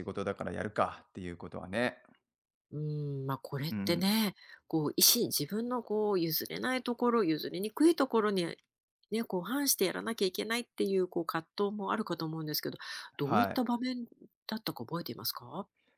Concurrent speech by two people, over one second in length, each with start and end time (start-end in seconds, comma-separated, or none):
none